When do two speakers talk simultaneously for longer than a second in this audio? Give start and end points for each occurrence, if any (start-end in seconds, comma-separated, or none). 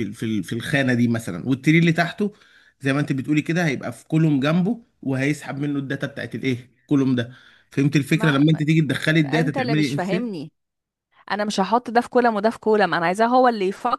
9.2-10.4